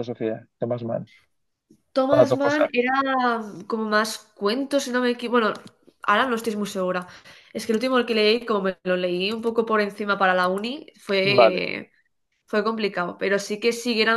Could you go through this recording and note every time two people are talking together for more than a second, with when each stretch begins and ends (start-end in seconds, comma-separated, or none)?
none